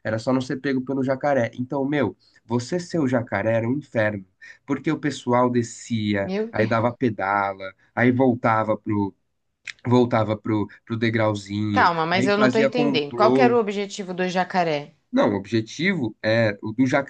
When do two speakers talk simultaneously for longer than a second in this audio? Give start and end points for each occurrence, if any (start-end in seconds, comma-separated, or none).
11.7-13.6